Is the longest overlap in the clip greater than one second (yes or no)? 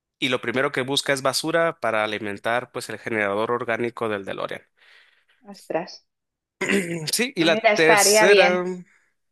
yes